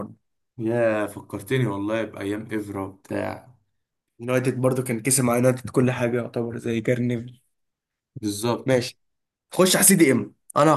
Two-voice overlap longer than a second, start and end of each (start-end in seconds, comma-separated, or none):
none